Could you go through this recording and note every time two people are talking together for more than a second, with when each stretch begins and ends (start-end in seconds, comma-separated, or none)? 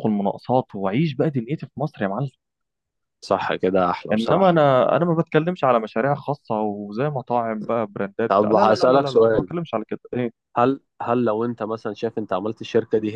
8.3-9.5